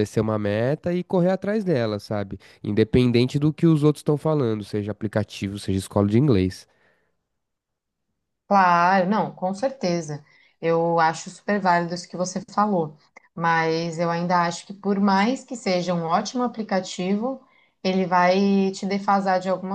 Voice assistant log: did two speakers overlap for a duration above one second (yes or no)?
no